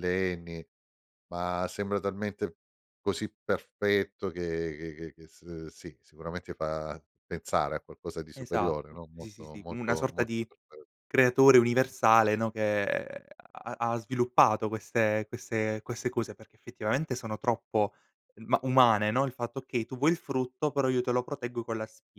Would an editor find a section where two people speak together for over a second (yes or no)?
yes